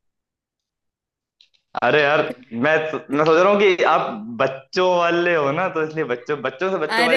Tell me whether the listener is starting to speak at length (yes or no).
yes